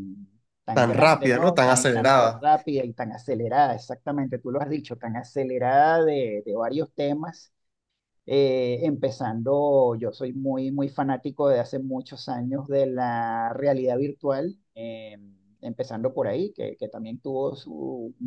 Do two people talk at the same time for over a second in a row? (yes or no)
yes